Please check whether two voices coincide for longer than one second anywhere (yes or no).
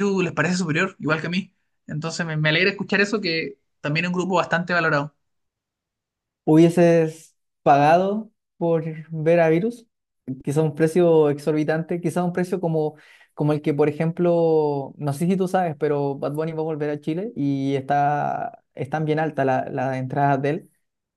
no